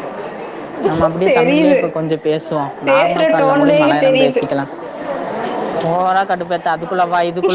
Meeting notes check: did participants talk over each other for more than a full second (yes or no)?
yes